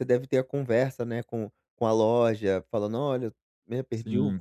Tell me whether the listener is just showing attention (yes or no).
yes